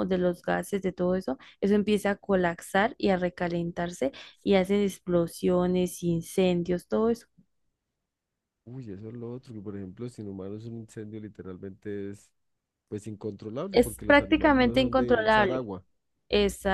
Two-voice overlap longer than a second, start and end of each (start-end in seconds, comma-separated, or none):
13.7-15.7